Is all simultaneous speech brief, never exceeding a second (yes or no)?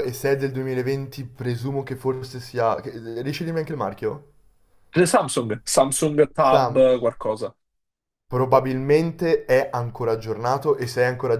yes